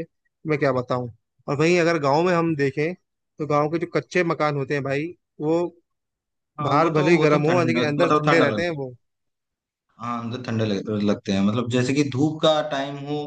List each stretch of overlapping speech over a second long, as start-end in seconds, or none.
6.7-8.8